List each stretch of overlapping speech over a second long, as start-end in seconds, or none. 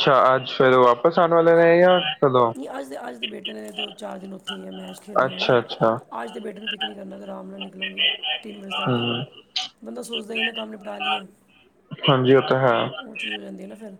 none